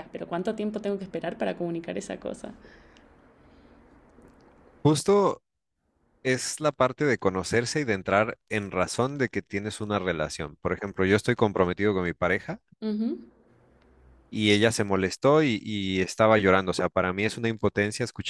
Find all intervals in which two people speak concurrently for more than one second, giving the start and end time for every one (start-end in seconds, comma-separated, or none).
none